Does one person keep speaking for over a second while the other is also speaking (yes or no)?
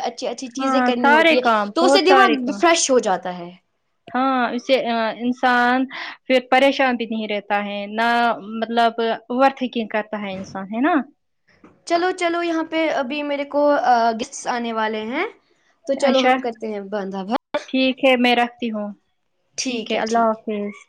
yes